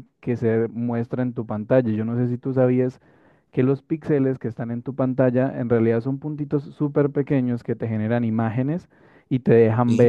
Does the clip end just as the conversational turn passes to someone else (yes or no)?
no